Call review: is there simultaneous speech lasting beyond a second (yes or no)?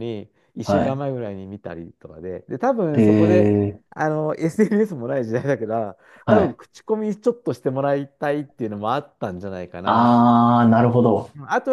no